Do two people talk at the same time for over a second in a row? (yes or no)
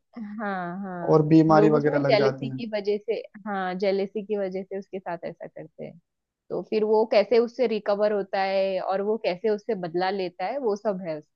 yes